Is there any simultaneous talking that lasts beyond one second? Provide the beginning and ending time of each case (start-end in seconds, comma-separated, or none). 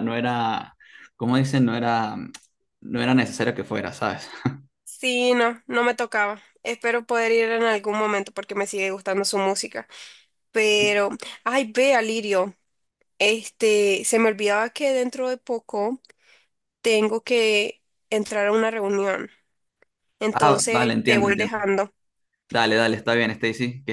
20.3-21.6